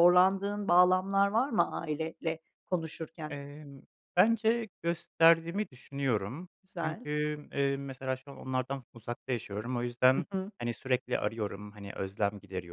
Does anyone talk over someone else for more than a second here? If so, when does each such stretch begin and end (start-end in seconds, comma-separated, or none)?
none